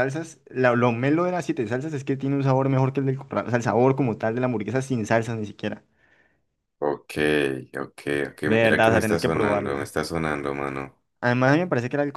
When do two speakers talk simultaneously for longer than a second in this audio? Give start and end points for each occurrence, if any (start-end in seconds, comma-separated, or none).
8.4-9.9